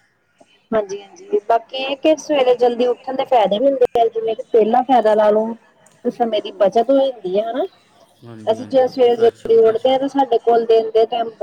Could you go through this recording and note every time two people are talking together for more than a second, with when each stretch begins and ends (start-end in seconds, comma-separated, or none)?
8.5-9.9